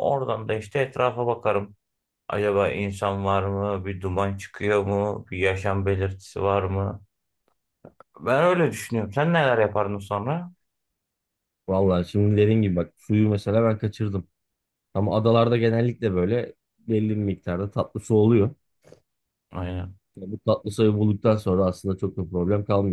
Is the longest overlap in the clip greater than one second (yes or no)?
no